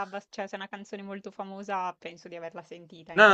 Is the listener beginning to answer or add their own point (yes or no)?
yes